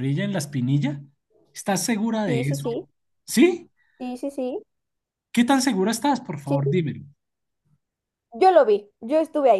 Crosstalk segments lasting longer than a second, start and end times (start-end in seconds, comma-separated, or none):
none